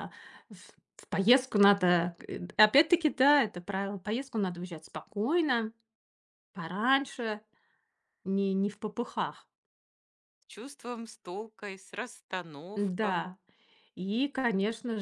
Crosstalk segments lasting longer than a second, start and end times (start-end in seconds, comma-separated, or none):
none